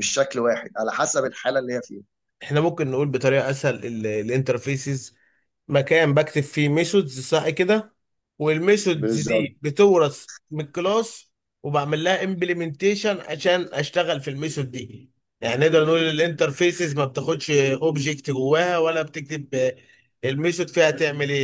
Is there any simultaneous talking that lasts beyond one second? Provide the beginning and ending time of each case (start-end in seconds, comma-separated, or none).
none